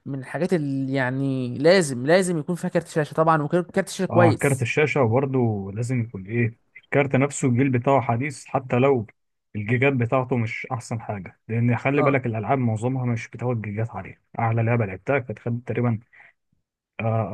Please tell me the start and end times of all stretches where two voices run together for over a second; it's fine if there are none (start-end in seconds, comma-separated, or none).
none